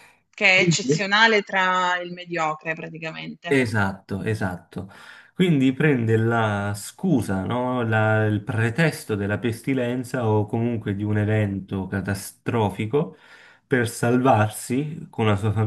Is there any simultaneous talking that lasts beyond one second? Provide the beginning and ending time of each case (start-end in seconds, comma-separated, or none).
none